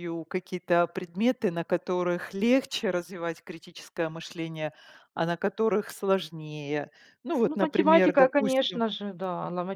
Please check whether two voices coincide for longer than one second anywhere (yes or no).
yes